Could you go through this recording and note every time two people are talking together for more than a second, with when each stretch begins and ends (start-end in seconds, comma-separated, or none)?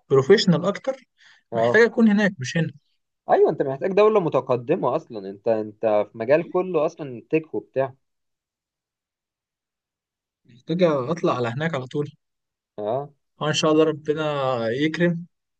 none